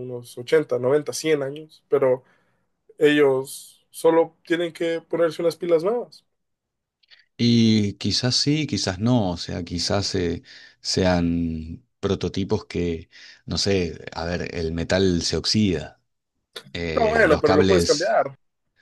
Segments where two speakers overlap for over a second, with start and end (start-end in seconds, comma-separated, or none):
16.9-18.1